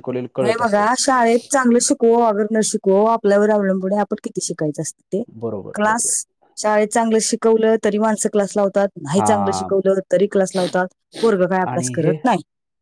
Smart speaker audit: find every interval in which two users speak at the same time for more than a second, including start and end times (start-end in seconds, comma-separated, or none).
none